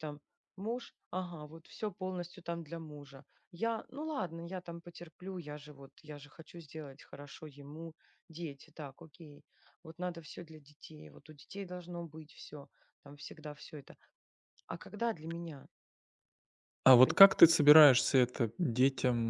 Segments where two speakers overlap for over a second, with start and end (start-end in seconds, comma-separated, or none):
none